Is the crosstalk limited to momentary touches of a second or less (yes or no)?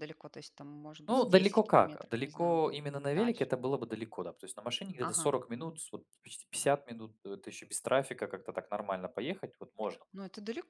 no